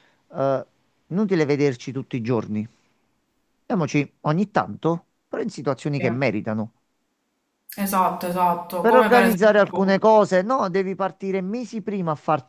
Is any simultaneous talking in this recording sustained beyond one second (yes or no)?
yes